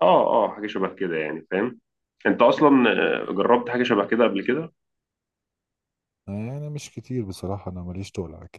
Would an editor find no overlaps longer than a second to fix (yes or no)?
yes